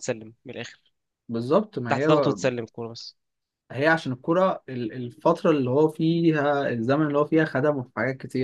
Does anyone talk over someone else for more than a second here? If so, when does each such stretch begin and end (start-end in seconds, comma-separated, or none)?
none